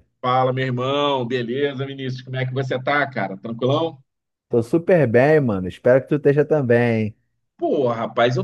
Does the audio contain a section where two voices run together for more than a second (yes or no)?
no